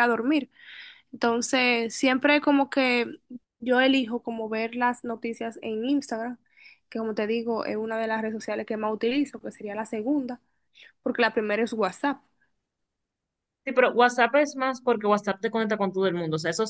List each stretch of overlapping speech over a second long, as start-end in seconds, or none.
none